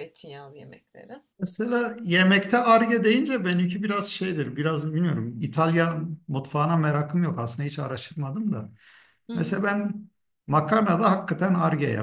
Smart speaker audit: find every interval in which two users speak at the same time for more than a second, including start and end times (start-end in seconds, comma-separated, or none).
none